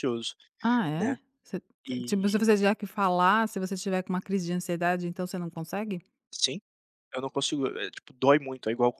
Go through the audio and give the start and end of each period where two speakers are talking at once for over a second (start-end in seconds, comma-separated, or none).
none